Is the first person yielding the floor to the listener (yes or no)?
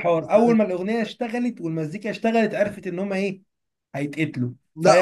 yes